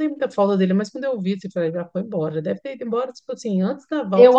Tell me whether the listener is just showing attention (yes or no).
no